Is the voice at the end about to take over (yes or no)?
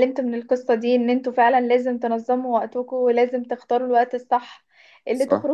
no